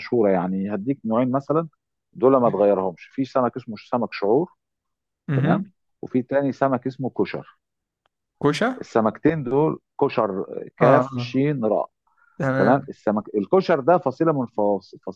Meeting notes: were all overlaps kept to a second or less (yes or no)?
yes